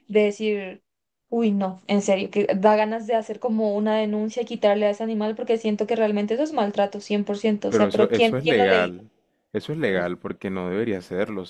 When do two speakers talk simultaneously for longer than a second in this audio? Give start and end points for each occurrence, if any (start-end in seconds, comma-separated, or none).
7.7-8.9